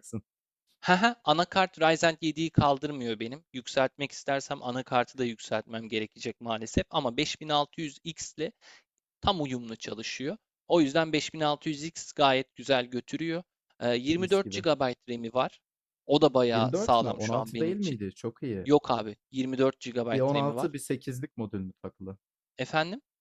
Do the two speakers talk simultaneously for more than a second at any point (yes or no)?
yes